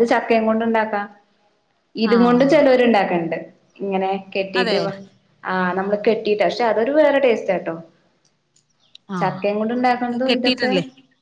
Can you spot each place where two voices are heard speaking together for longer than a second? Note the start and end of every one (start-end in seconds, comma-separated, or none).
9.2-10.7